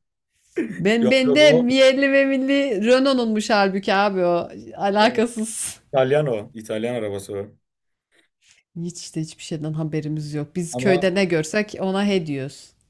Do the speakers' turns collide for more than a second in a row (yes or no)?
no